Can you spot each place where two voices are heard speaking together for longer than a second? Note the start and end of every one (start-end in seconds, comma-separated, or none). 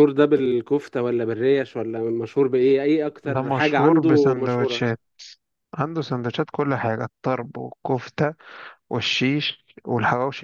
3.3-4.9